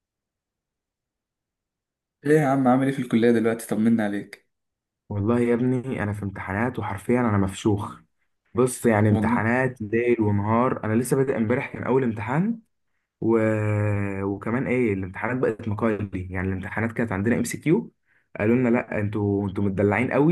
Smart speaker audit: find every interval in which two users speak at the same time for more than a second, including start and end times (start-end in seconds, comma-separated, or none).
none